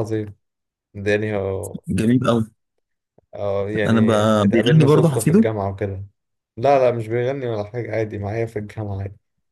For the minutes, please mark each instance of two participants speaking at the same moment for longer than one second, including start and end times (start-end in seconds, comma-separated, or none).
3.9-5.5